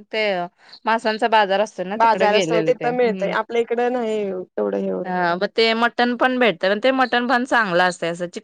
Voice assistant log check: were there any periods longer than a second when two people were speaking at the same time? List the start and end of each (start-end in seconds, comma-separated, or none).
2.0-3.3